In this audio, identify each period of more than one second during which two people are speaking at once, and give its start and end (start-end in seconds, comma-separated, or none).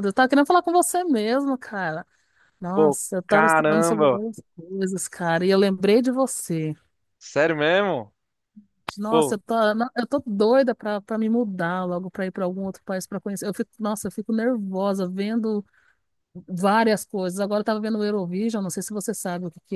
2.7-4.2